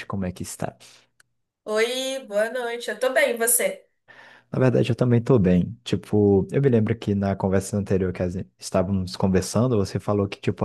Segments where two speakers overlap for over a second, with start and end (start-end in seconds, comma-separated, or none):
none